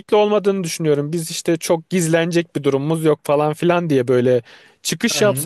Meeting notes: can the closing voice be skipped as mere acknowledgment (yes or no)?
yes